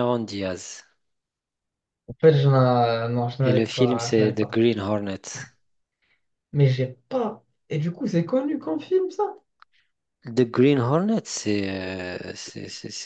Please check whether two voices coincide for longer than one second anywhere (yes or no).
yes